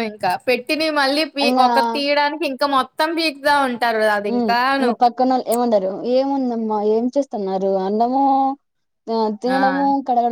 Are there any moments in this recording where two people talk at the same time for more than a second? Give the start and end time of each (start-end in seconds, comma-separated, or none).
none